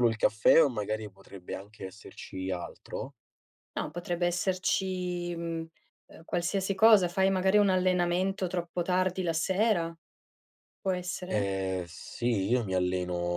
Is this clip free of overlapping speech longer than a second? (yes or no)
yes